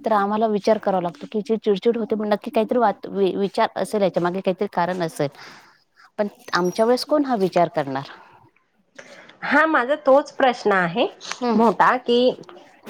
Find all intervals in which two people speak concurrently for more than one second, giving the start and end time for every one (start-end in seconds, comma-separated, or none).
none